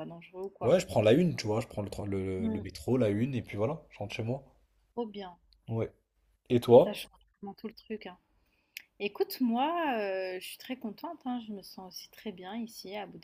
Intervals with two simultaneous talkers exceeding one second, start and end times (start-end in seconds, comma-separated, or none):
none